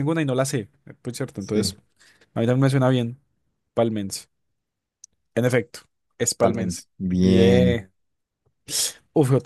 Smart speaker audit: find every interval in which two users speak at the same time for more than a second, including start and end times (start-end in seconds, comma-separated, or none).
6.4-7.8